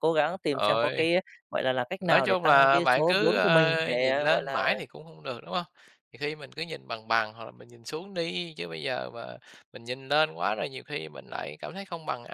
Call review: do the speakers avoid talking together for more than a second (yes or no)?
no